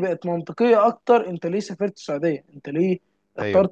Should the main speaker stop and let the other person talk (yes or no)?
no